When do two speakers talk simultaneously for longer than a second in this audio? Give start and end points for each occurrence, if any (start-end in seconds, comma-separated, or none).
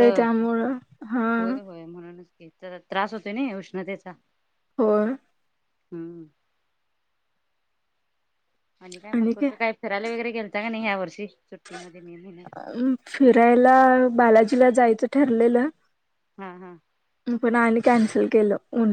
none